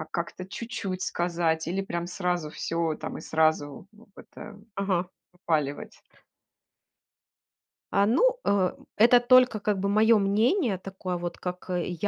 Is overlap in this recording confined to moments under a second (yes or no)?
yes